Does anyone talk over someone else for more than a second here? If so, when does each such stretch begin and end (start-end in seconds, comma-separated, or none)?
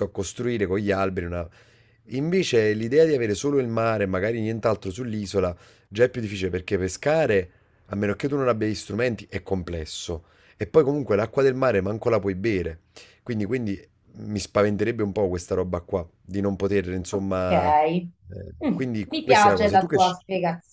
18.6-20.2